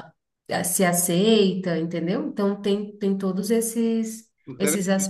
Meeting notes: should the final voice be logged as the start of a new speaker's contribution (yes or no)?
yes